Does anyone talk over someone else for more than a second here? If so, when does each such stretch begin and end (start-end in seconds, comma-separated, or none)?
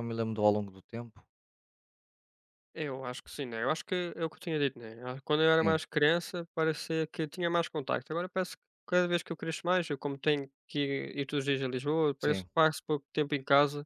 none